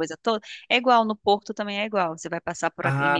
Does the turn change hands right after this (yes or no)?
yes